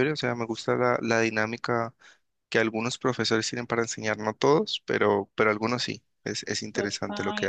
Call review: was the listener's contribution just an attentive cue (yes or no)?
no